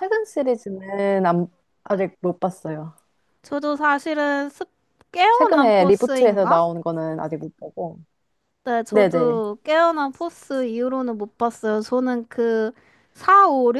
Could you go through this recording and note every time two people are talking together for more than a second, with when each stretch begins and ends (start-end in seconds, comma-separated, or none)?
5.3-6.6